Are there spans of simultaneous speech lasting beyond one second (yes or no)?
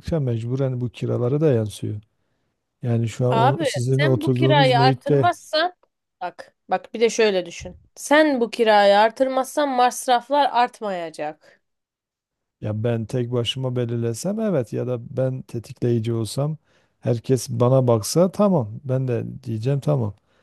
yes